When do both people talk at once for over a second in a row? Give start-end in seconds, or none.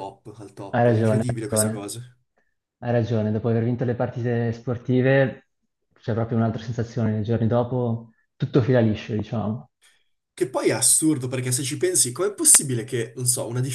0.7-1.9